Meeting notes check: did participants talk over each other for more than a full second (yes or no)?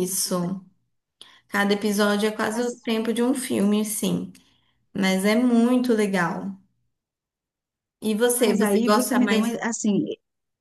yes